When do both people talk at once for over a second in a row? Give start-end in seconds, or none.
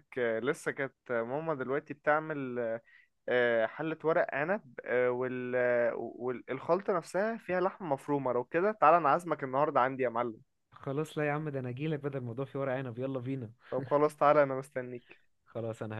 none